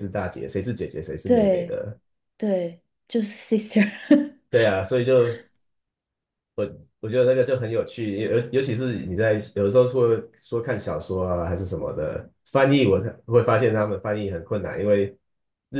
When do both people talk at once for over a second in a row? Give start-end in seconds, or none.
none